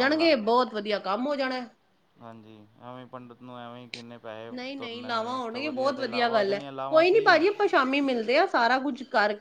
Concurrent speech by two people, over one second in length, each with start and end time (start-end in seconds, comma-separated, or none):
4.5-7.5